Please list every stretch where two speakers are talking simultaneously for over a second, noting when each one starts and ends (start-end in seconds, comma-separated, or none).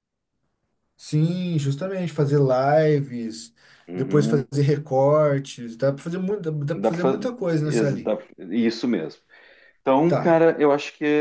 6.7-8.2